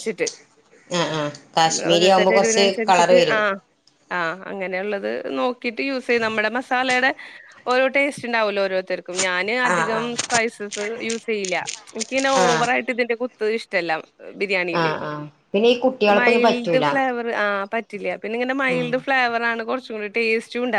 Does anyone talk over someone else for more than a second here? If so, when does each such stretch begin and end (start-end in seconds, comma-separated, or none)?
1.7-3.4